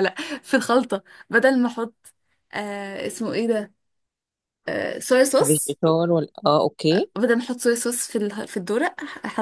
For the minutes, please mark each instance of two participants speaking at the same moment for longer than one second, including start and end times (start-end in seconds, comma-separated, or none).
none